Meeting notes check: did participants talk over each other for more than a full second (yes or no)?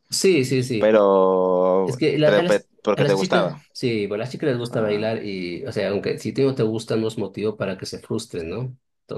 yes